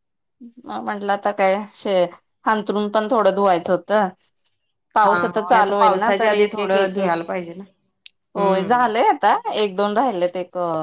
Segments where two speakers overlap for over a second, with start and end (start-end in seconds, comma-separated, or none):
5.0-7.2